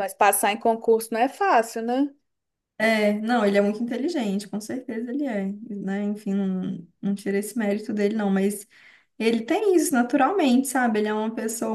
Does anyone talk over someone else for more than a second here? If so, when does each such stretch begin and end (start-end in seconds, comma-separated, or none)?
none